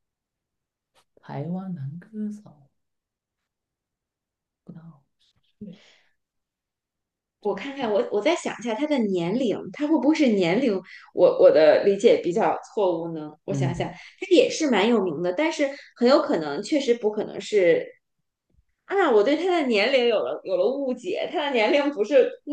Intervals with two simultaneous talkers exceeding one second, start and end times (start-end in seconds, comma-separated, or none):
none